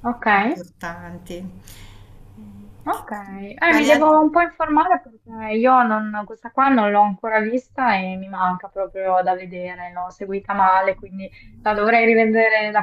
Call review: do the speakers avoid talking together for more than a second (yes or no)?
yes